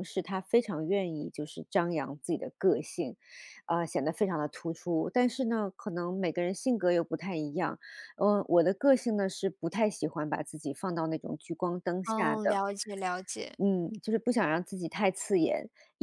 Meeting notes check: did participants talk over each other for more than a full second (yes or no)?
no